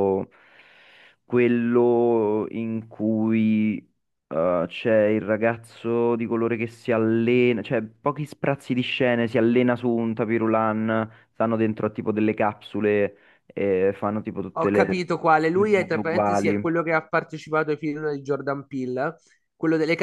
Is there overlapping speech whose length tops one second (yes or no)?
yes